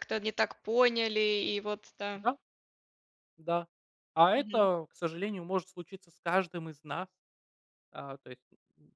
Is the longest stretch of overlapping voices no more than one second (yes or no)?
yes